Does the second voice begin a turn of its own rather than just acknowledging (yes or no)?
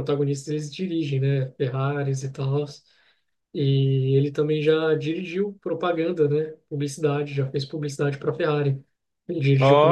no